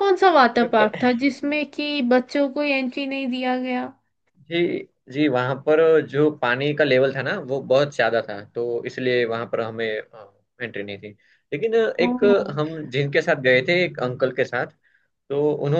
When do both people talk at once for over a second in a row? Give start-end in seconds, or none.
none